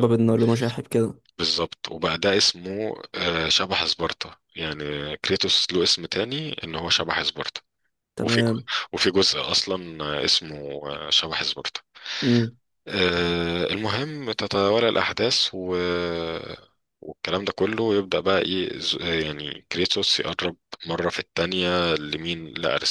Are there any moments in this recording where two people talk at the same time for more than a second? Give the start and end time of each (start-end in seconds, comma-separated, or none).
none